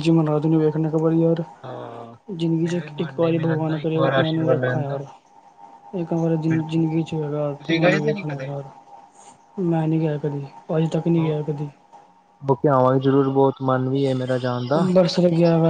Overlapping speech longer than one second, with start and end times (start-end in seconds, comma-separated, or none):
2.6-5.0, 6.5-8.5